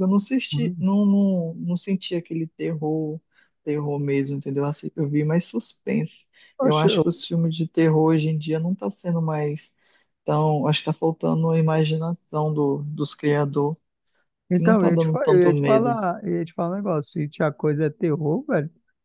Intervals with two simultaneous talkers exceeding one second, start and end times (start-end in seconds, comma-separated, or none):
14.6-16.0